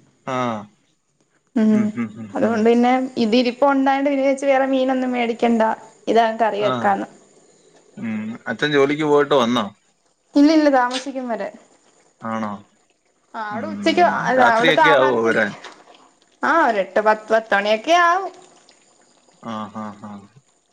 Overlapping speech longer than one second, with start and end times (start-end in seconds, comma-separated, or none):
13.6-15.3